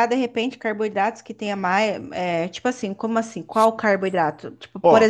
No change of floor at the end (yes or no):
yes